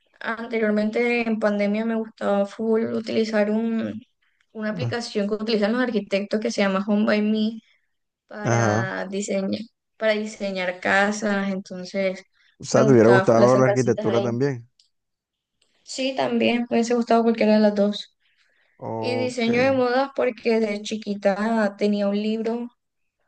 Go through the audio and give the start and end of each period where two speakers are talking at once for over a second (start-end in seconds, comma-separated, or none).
12.7-14.3